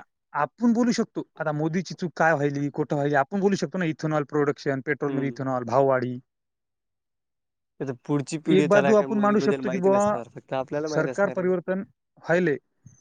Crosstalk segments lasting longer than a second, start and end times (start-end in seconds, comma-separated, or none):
8.6-10.0